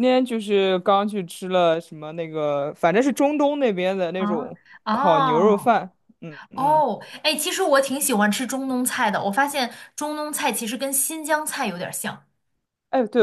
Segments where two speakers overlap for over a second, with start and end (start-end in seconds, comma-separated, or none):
4.2-5.8